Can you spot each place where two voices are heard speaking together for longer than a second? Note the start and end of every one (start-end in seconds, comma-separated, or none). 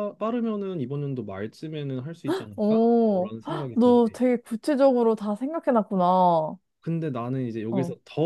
2.5-4.2